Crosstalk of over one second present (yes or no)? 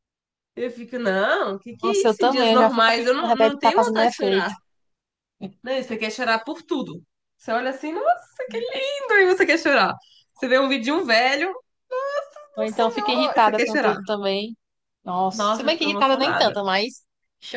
yes